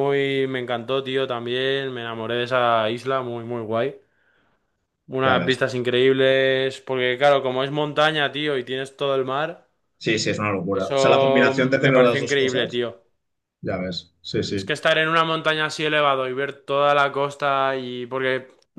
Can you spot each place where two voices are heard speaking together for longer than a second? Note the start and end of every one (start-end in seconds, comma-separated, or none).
10.7-12.8